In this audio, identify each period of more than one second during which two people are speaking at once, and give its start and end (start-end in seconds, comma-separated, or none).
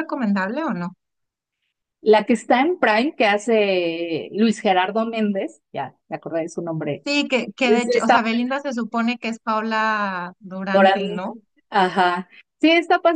none